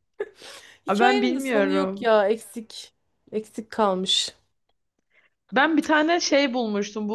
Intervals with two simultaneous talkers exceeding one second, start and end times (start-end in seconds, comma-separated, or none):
0.9-2.1